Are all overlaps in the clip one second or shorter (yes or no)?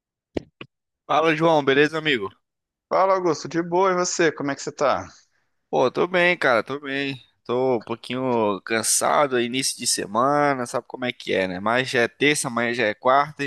yes